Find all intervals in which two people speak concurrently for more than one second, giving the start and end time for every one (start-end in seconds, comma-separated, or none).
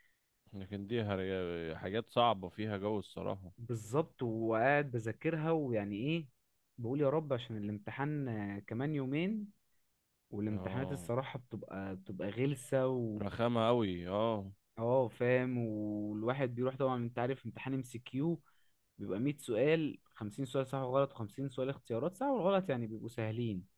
none